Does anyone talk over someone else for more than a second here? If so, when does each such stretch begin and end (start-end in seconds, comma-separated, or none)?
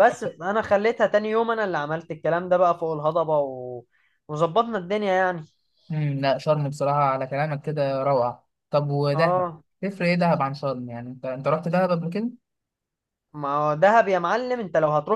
none